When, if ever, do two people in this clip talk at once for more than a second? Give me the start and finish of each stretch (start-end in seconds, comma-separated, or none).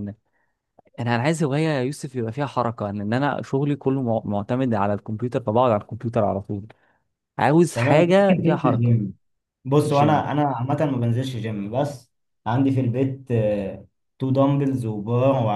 7.8-9.0